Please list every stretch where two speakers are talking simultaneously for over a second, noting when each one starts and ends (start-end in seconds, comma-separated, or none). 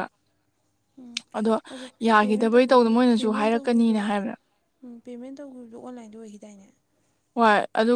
2.2-4.0